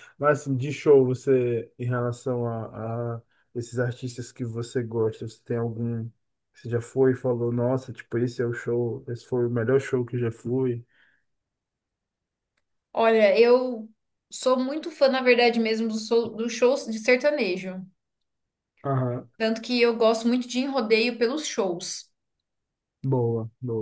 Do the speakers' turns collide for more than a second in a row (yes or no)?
no